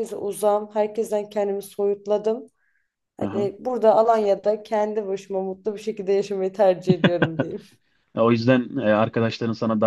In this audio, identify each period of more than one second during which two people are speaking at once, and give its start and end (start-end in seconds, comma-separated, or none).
none